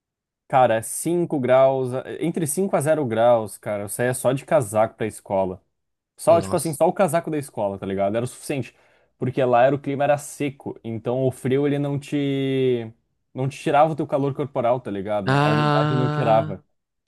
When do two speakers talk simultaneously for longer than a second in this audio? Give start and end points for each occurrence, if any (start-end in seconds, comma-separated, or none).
15.3-16.5